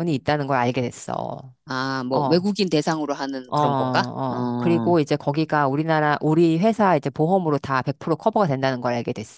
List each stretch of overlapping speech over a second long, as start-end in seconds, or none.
3.5-5.0